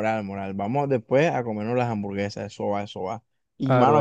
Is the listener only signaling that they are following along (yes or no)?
yes